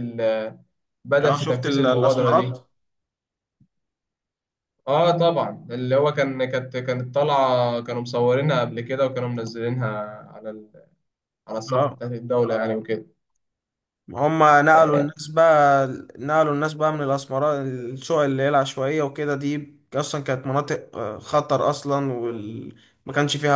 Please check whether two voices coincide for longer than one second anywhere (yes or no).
yes